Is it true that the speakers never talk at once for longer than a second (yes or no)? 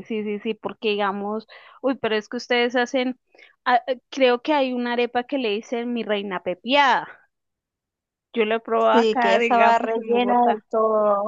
no